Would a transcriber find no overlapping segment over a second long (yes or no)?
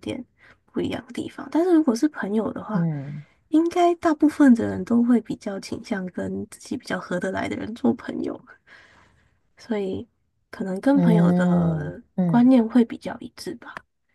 no